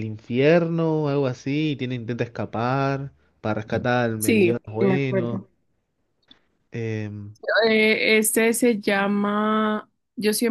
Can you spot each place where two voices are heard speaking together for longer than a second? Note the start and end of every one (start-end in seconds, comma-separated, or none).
4.2-5.5